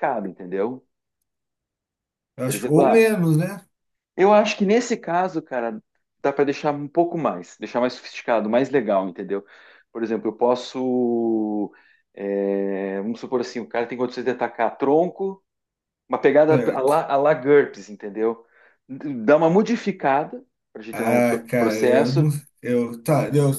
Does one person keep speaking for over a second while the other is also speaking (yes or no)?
yes